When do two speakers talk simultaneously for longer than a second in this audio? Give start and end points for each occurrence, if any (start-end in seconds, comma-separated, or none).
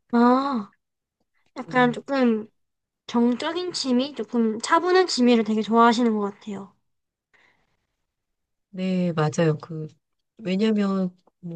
none